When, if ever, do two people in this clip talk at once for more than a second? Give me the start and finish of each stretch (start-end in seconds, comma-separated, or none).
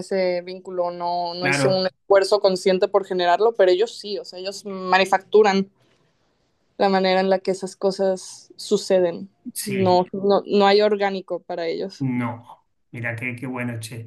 none